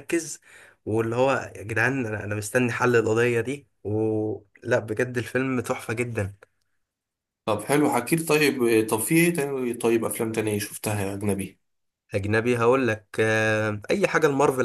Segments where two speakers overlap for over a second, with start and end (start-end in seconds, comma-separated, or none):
none